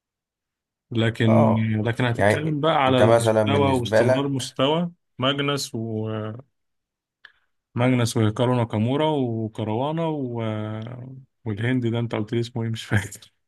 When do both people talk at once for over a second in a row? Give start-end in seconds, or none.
2.1-4.5